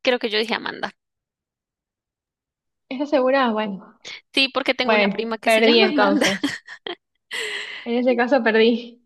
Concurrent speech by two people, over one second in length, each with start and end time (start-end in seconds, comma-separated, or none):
4.8-6.3